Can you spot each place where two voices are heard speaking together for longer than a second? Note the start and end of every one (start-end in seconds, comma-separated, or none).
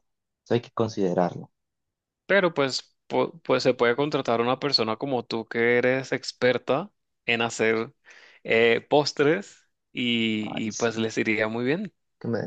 none